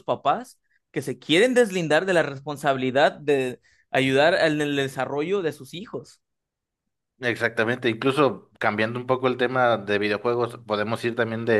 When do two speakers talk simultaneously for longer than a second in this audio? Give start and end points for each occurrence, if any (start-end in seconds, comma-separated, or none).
none